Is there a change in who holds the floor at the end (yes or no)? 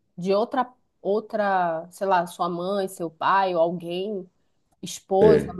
no